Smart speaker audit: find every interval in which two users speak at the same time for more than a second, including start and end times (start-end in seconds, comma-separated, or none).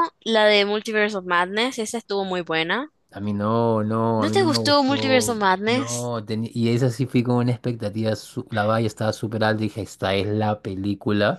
4.2-6.1